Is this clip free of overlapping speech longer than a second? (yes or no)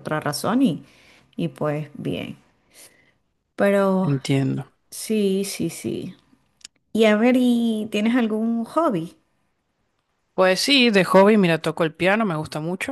yes